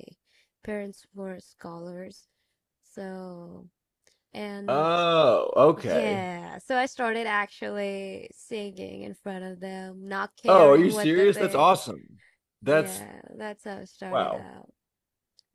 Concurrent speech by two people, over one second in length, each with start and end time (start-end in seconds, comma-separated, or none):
10.5-11.7